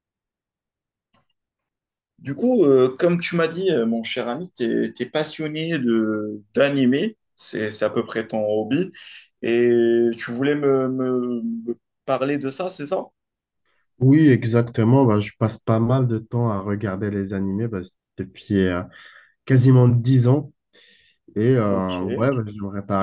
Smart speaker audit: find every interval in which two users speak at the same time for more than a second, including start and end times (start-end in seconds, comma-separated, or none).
none